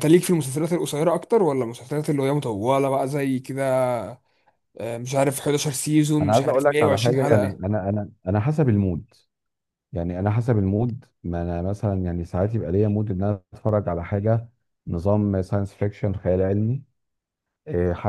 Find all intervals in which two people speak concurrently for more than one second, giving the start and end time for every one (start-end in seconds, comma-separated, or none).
6.2-7.6